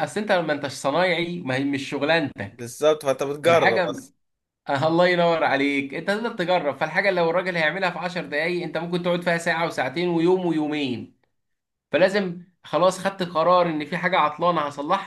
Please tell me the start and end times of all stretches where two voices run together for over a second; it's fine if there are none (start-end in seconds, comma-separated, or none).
none